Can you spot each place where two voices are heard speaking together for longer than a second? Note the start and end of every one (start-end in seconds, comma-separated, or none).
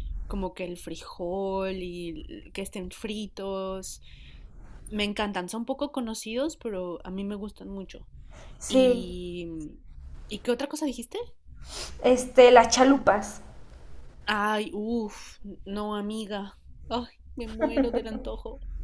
none